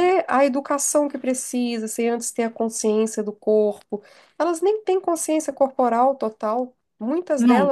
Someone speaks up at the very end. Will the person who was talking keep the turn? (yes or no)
no